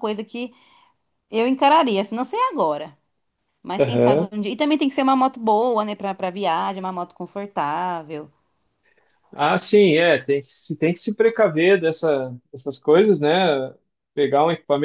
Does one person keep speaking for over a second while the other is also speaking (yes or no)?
no